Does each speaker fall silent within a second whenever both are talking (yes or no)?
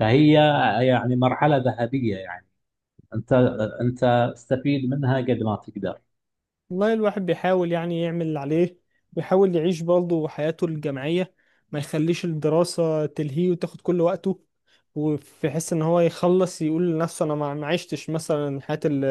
yes